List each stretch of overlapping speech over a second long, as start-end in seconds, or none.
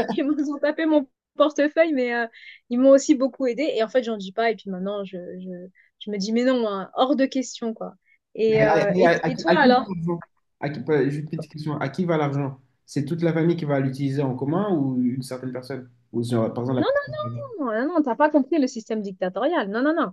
8.5-9.9